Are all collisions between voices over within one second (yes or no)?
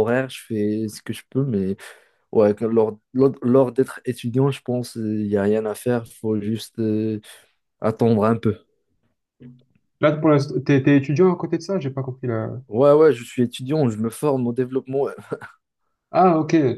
yes